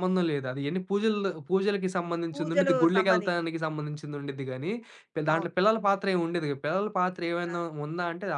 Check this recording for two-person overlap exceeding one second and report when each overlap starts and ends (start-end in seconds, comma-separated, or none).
2.3-3.5